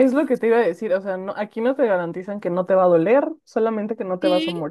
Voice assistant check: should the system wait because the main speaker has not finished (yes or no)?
no